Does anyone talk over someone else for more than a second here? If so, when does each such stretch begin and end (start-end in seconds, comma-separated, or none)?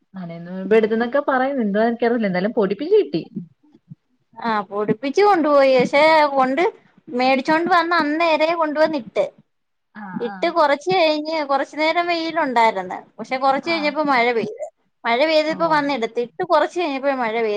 none